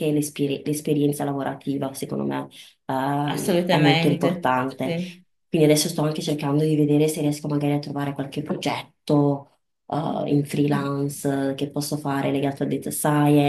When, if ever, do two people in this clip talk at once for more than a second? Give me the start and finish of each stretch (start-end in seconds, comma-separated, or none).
3.3-4.9